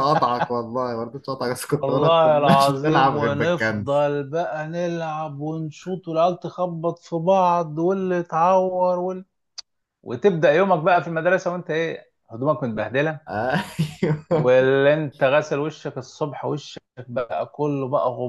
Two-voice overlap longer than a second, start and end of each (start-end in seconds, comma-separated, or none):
1.7-4.0